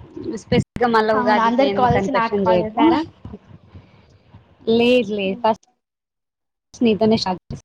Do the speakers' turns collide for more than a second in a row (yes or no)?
yes